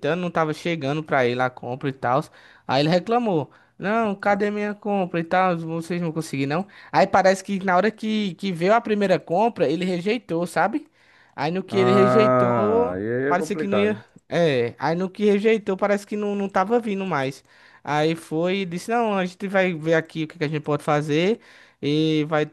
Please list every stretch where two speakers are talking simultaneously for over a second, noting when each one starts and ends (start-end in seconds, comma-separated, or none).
11.7-14.0